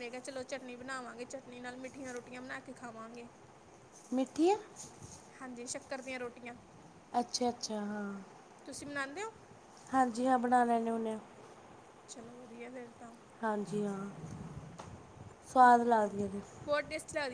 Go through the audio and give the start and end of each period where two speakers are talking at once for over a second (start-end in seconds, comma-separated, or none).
none